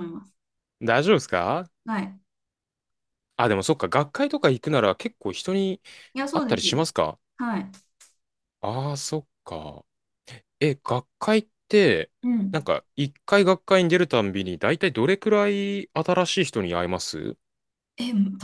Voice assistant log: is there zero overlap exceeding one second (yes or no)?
yes